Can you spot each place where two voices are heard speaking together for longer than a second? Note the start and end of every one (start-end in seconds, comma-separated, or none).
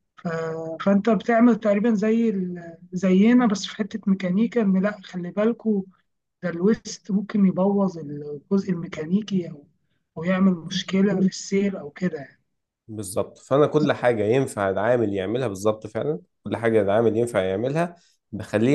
none